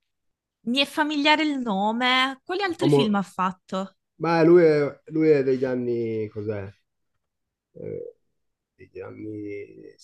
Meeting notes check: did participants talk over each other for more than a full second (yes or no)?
no